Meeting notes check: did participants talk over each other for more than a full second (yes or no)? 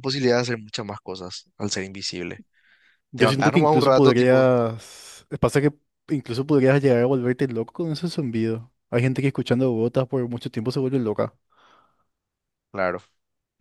yes